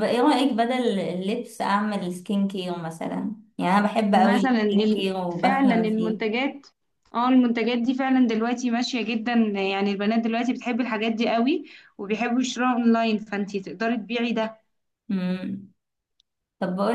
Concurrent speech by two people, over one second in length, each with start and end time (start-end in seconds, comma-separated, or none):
4.1-6.3